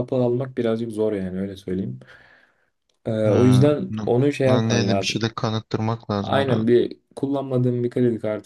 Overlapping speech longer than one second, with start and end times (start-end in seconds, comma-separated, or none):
3.2-5.2